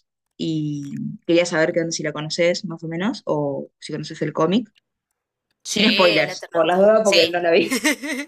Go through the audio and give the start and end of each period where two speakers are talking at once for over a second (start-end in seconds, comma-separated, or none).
5.7-7.4